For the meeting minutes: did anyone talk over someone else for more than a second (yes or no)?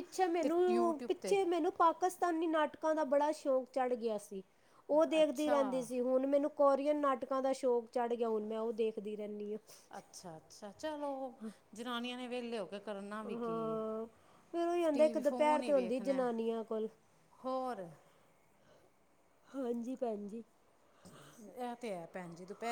yes